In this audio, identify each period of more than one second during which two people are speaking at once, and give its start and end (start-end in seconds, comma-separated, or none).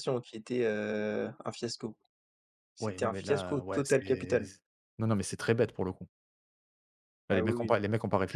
2.8-4.4